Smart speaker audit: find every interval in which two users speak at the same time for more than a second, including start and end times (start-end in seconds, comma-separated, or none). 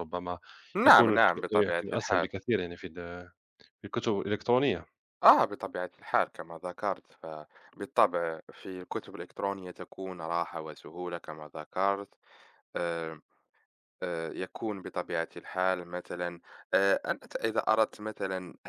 0.9-2.3